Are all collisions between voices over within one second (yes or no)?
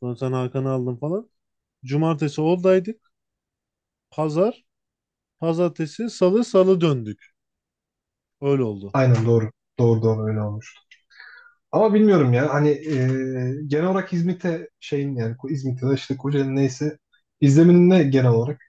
yes